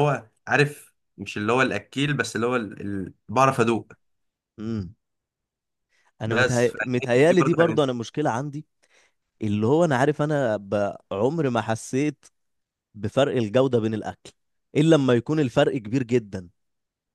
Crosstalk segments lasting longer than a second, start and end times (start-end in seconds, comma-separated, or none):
6.3-7.8